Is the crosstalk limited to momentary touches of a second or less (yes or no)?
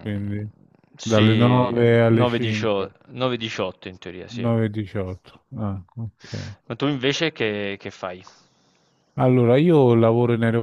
no